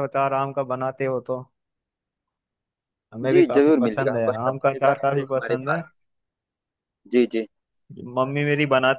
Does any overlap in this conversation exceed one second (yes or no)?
yes